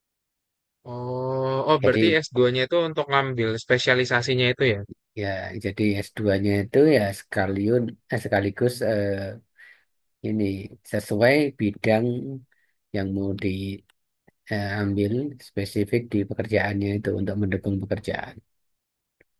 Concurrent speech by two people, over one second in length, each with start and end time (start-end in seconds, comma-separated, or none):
none